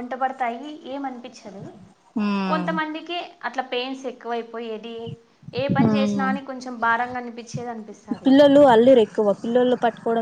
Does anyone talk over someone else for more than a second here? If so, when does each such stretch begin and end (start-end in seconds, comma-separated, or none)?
none